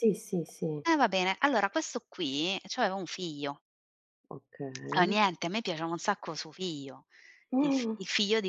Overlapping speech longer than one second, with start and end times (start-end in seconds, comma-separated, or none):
none